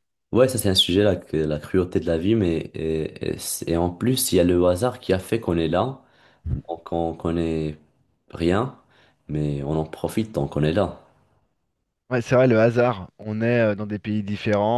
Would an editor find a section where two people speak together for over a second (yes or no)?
no